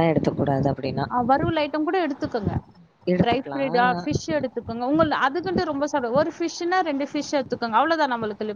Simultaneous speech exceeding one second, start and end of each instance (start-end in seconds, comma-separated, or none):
none